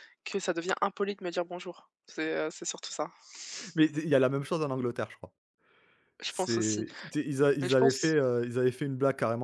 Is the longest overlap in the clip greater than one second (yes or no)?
no